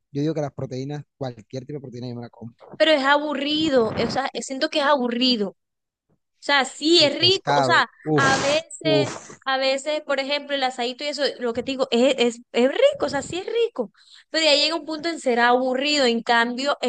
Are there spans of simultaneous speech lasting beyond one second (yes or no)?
yes